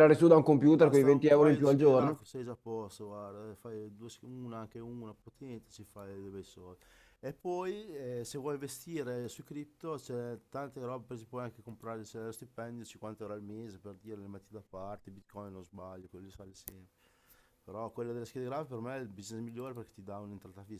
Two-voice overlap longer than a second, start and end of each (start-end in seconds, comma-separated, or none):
0.8-2.2